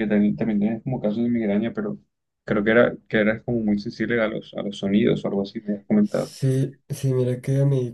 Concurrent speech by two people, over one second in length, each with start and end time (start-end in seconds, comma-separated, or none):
none